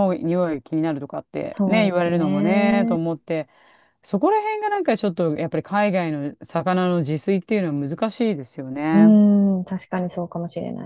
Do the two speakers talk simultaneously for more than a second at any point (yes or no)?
yes